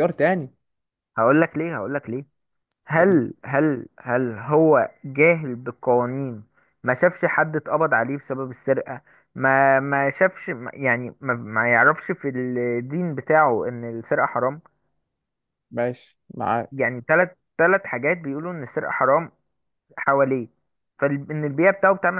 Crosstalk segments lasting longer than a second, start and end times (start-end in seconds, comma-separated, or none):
none